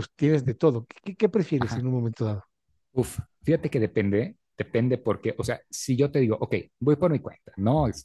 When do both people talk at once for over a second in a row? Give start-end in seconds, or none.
none